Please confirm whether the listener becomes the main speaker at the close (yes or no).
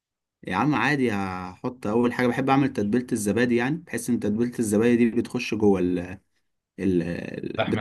no